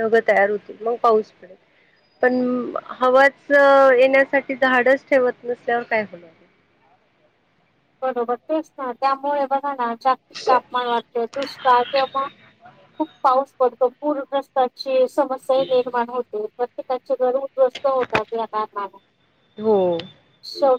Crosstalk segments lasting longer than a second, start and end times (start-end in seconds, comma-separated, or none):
none